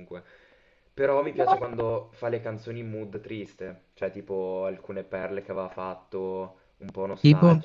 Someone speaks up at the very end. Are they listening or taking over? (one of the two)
listening